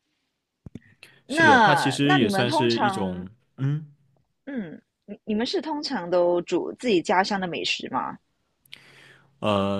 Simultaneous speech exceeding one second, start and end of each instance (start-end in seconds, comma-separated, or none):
1.3-3.3